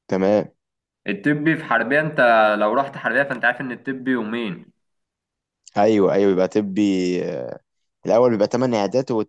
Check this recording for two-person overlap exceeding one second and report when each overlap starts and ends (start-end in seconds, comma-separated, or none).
none